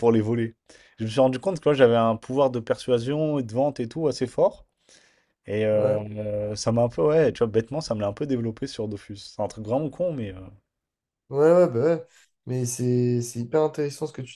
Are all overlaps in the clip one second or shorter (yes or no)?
yes